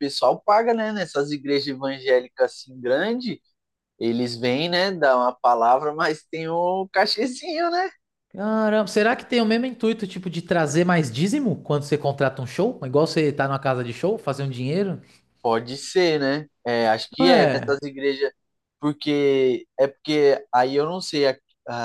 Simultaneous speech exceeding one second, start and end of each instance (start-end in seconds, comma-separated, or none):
none